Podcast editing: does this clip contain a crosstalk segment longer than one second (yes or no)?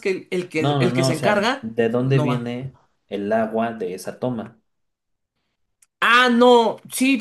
yes